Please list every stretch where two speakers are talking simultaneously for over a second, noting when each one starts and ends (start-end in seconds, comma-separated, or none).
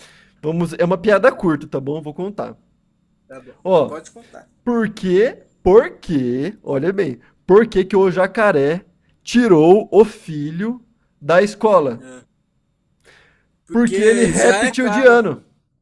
13.7-15.2